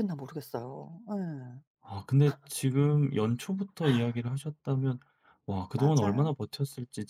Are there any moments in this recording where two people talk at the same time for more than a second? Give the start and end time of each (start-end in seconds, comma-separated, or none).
none